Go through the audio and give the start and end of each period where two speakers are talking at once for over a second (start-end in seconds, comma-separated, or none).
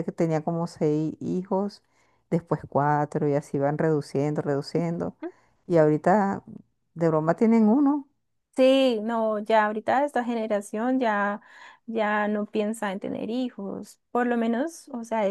none